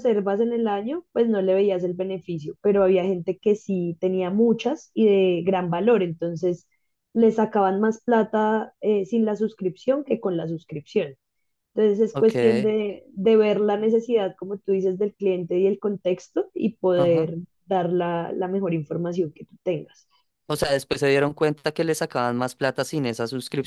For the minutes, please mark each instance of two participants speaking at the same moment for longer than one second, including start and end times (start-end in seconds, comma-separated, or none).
none